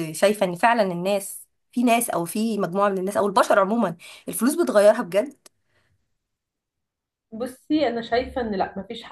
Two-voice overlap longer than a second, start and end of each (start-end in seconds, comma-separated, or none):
none